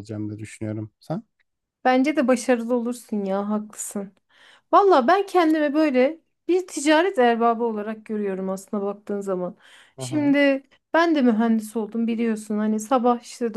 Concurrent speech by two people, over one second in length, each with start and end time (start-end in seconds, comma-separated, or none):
none